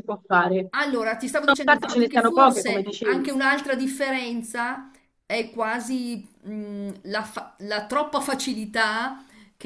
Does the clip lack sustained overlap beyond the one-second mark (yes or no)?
no